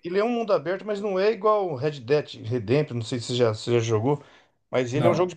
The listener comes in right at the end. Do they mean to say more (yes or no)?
no